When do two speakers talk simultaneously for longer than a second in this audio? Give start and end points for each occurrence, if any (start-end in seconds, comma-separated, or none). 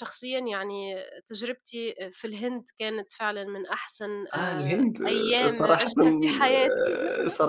4.3-5.9